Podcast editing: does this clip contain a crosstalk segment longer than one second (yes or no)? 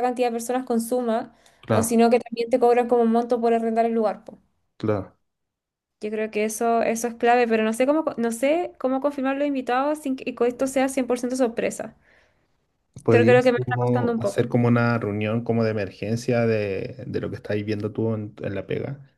yes